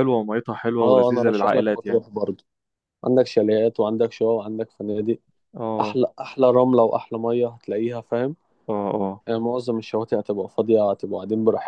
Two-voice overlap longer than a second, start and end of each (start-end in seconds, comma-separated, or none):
0.8-2.0